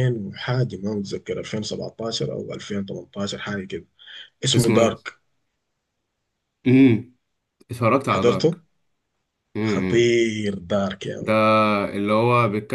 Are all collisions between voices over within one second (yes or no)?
yes